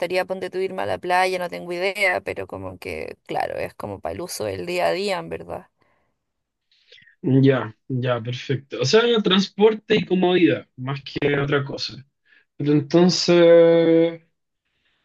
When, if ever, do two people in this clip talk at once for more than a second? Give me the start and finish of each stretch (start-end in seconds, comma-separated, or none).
none